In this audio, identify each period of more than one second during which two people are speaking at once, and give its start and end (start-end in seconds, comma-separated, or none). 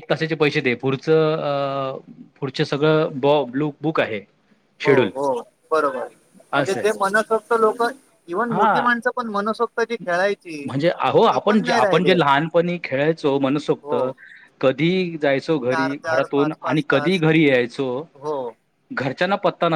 15.7-17.2